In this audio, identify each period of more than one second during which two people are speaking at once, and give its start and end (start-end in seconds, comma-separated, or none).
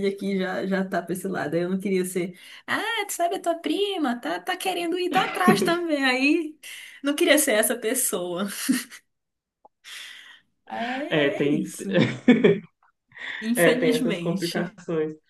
13.6-14.8